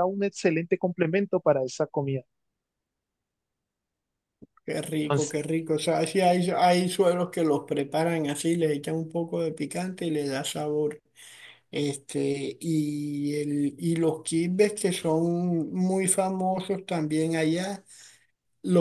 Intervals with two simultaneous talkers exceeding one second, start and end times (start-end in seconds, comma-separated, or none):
none